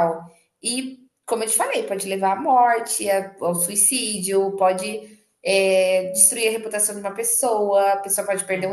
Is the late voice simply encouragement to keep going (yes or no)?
yes